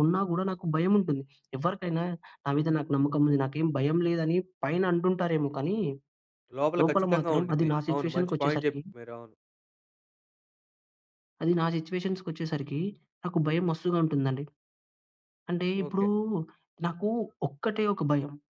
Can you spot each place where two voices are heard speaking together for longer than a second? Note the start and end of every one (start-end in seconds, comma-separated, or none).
6.8-8.8